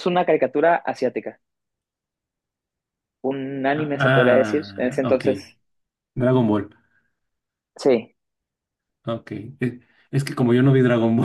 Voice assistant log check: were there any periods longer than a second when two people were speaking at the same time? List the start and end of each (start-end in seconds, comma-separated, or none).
3.7-5.2